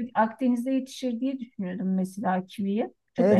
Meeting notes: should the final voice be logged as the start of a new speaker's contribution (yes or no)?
yes